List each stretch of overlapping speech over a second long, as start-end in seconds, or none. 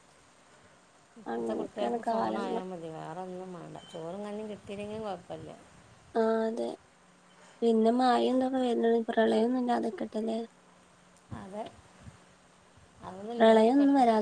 1.3-2.6